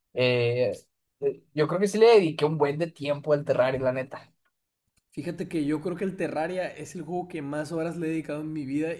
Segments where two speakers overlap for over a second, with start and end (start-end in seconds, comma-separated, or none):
none